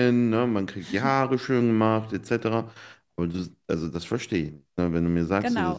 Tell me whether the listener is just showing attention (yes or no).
no